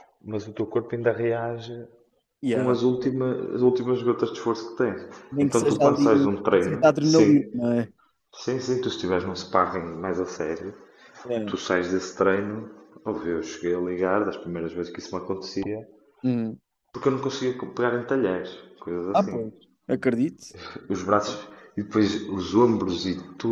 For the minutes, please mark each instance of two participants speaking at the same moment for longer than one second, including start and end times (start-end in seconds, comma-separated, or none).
5.3-7.5